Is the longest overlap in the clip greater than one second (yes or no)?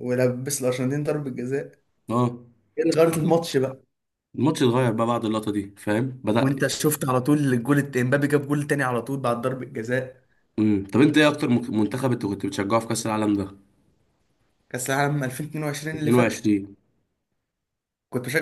no